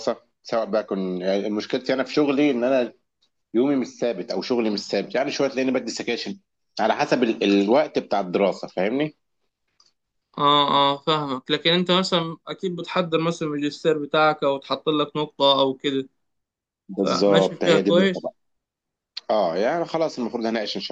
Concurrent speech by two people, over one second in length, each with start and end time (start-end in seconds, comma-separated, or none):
17.0-18.3